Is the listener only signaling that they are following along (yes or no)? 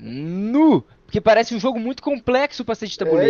no